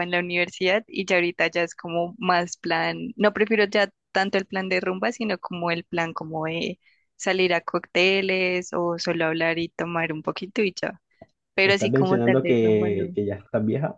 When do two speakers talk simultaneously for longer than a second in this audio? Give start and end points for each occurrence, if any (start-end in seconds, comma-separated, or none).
11.6-13.2